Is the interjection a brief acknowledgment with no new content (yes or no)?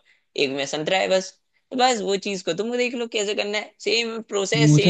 no